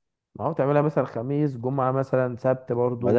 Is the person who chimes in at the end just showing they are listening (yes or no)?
no